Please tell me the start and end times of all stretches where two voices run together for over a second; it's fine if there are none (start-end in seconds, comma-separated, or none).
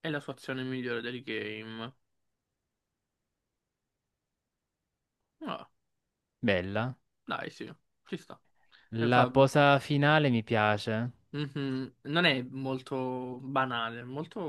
none